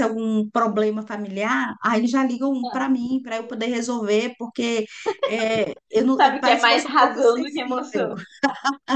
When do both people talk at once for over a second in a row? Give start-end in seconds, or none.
6.2-8.1